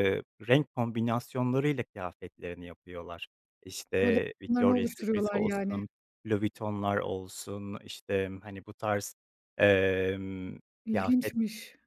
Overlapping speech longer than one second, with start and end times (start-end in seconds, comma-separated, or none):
3.9-5.8